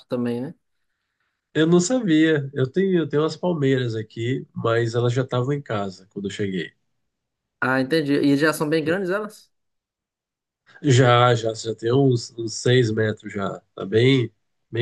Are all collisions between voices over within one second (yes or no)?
yes